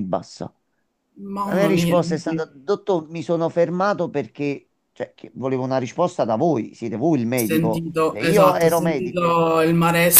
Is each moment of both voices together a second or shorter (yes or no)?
no